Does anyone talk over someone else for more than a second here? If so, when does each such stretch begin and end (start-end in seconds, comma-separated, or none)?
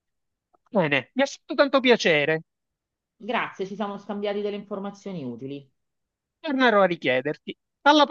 none